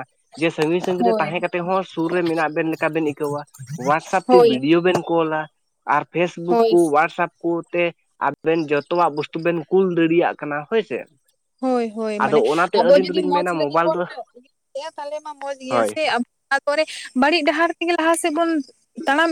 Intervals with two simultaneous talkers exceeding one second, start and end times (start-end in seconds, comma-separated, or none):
12.2-14.0